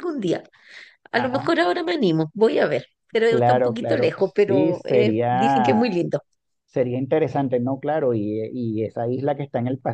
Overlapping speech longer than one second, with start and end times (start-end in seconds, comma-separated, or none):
3.3-5.8